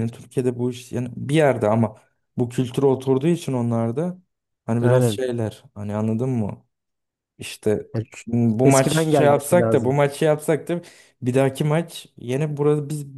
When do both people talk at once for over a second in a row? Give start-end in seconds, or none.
8.7-10.0